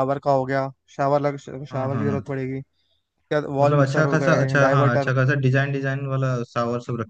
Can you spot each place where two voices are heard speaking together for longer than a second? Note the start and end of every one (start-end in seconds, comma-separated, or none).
3.6-5.1